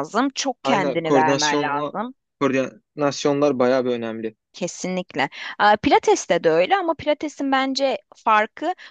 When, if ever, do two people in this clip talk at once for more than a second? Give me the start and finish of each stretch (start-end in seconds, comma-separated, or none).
0.6-1.9